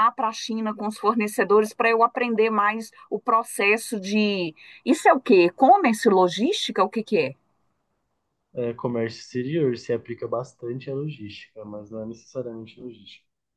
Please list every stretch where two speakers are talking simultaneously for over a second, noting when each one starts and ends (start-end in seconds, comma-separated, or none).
none